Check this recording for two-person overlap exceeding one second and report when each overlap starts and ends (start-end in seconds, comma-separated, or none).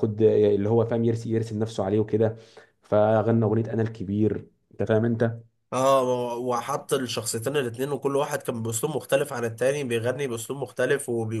none